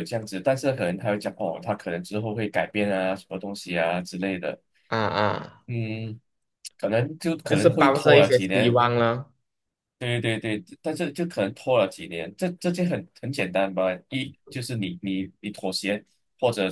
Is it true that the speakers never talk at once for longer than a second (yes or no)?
no